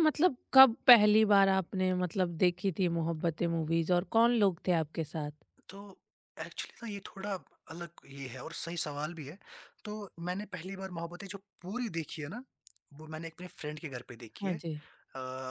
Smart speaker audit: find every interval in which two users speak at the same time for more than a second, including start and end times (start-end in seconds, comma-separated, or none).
none